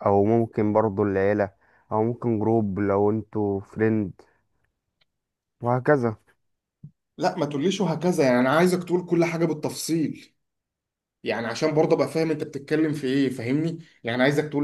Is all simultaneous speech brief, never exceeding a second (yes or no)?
yes